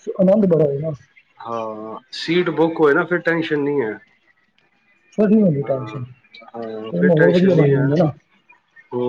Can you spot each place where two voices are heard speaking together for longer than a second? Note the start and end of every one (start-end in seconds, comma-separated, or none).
5.6-7.8